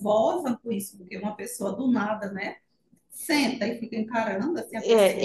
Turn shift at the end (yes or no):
yes